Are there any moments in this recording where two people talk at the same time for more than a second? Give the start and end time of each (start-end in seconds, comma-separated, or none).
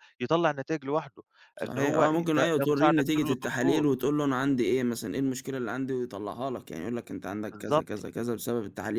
1.6-3.8